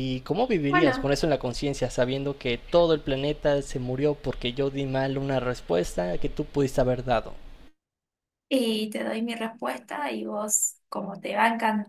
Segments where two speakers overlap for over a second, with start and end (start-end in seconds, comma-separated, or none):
none